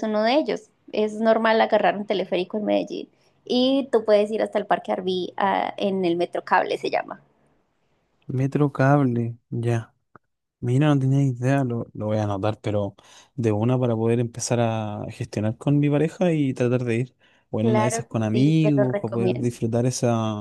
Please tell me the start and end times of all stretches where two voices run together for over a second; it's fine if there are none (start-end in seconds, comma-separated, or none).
17.6-19.5